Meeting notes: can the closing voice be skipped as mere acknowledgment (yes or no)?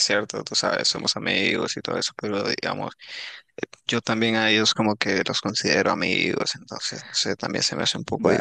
no